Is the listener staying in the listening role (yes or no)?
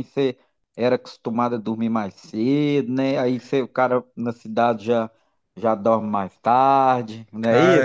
no